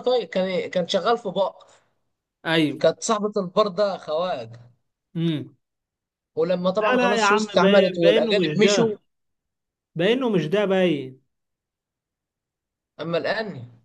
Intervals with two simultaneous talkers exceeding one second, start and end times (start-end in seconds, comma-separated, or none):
6.8-8.9